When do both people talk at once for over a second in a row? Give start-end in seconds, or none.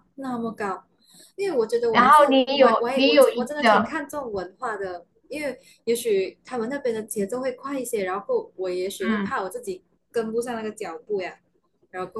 1.9-4.0